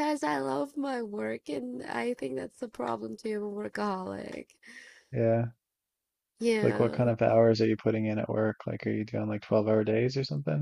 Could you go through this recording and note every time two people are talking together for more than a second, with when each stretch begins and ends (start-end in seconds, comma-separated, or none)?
none